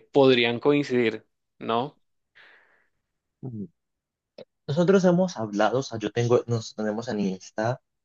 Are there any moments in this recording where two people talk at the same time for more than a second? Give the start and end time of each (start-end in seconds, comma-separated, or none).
none